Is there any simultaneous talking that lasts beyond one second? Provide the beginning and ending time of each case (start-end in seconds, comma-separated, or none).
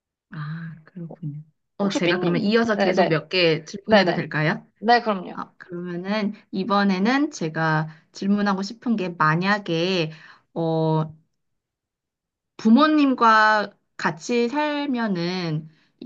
1.8-3.2